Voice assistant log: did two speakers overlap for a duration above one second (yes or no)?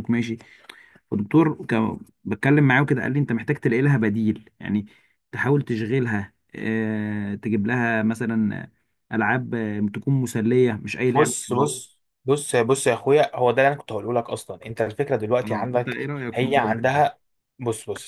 yes